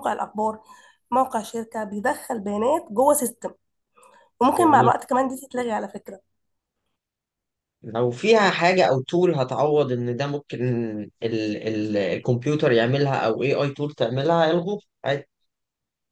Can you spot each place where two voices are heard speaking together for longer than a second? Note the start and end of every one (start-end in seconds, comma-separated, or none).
none